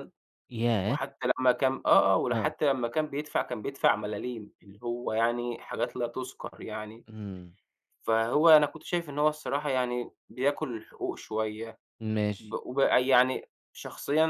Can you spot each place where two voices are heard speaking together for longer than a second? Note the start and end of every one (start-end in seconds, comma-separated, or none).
none